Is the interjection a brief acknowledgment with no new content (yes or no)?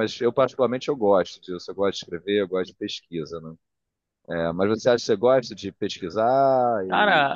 no